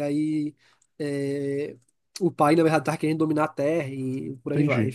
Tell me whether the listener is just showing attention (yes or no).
no